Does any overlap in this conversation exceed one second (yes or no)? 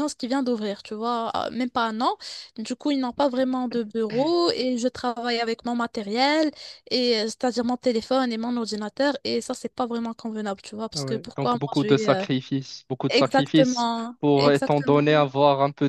yes